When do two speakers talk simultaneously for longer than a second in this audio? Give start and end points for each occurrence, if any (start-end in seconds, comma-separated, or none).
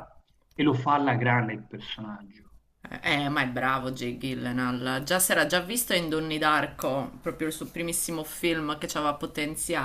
none